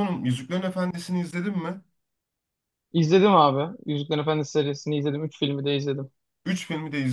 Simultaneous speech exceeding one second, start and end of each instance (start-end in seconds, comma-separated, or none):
none